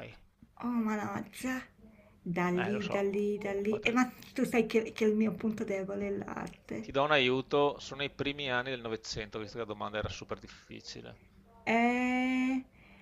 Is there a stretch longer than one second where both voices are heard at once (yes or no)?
yes